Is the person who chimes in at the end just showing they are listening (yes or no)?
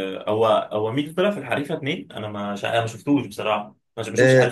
no